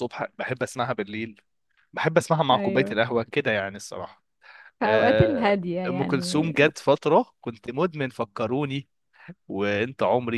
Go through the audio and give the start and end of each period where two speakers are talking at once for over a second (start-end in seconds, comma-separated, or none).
4.8-6.5